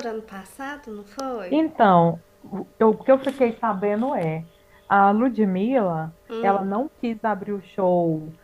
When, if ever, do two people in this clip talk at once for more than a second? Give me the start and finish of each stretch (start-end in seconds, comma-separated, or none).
none